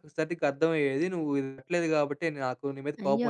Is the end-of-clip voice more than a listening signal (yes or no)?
yes